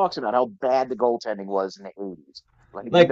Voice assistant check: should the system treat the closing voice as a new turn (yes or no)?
yes